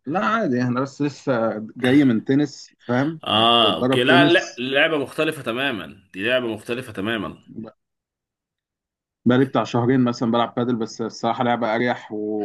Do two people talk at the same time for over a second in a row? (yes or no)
yes